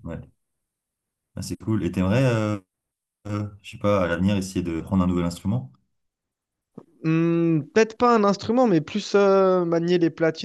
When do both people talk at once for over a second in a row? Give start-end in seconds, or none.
none